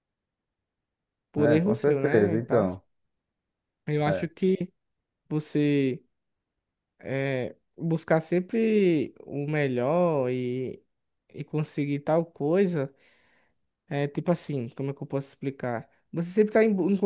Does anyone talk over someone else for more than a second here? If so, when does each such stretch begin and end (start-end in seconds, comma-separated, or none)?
1.4-2.7